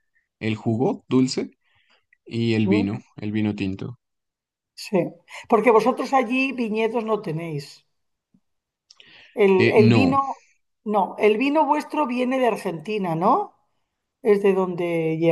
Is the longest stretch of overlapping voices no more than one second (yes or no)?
yes